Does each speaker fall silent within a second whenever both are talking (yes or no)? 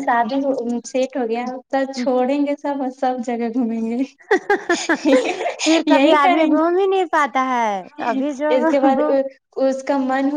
yes